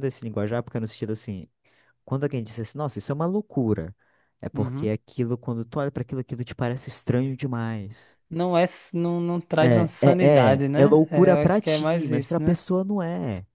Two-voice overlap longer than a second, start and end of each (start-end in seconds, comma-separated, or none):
9.6-12.6